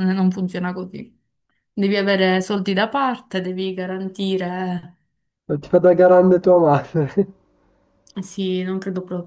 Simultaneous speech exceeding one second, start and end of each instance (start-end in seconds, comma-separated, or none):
none